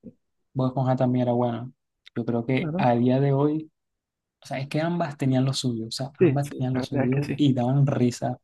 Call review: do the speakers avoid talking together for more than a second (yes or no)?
no